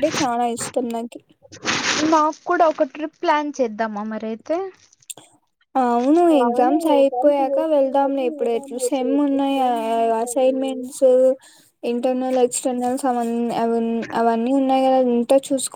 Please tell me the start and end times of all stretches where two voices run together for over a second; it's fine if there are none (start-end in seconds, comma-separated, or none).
7.5-11.1